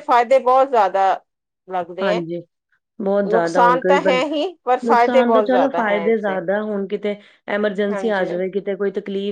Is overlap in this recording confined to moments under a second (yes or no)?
no